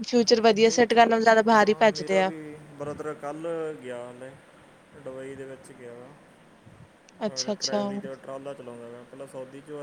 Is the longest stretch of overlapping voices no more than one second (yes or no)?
no